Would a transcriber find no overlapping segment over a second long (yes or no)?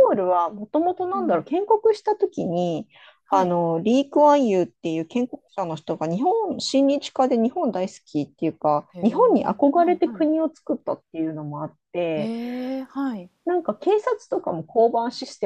no